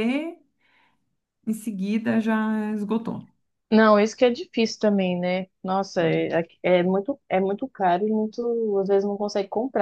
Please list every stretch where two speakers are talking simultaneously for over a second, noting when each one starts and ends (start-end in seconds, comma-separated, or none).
none